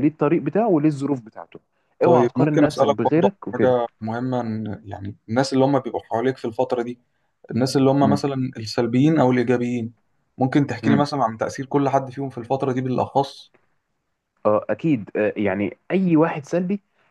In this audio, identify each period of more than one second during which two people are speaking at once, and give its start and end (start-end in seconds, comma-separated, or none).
2.0-3.7